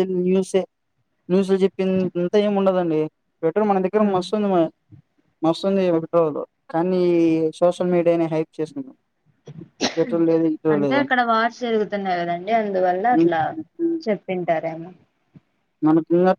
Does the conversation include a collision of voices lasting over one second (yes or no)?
no